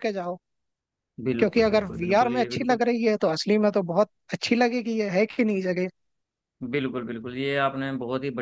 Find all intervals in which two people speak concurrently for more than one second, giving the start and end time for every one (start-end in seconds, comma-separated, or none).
1.4-2.8